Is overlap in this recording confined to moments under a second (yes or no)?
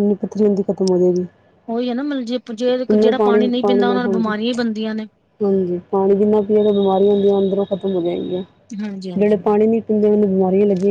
yes